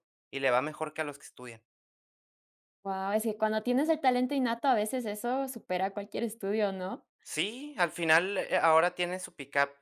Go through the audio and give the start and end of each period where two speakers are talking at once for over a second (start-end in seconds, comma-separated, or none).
none